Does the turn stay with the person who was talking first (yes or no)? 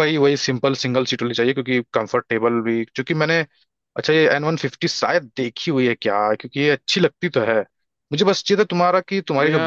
yes